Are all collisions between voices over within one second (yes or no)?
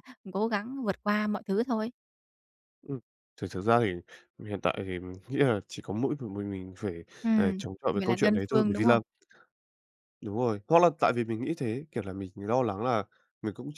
no